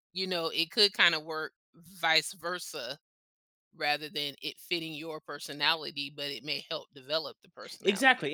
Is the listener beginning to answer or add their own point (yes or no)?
yes